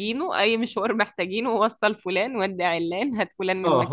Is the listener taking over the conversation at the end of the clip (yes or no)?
yes